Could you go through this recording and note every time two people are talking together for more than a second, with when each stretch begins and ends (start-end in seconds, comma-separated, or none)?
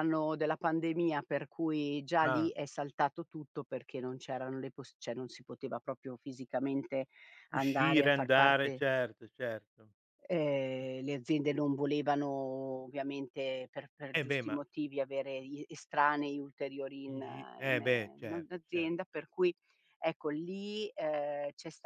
7.5-8.8, 17.1-18.9